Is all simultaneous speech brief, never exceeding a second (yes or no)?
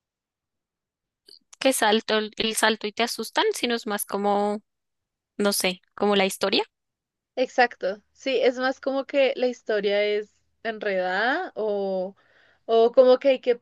yes